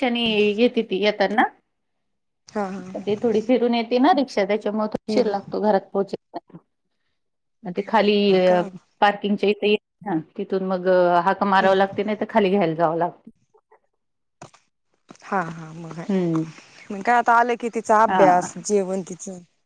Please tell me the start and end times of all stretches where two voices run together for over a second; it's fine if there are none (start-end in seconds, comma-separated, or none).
none